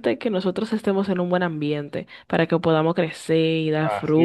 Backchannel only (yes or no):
yes